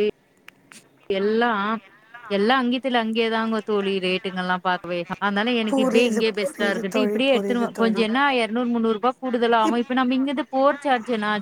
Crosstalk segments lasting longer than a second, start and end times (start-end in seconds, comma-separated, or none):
5.7-8.0